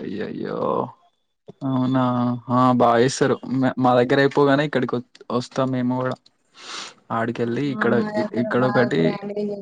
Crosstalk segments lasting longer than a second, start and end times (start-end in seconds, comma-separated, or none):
none